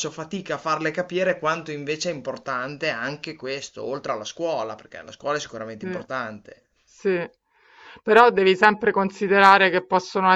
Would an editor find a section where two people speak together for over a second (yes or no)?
no